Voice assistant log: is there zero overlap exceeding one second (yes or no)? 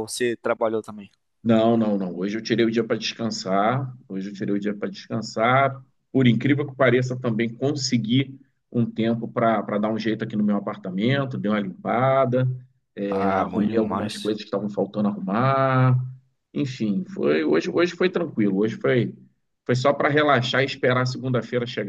no